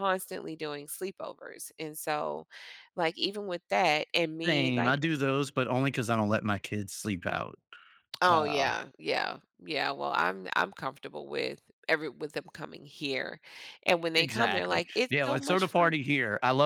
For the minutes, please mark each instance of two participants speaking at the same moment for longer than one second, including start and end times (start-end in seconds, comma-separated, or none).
14.1-16.0